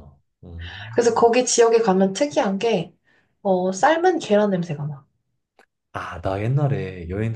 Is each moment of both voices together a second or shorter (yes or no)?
yes